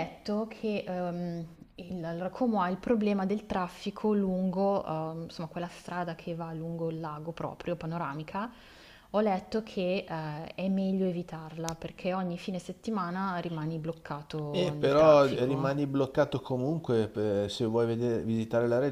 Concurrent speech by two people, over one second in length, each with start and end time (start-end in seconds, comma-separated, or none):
14.5-15.8